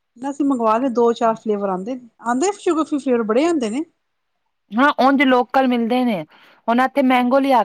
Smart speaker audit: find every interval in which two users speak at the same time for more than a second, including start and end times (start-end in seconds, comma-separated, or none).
none